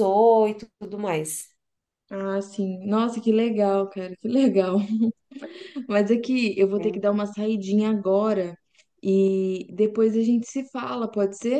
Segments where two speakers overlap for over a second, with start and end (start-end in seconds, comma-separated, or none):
none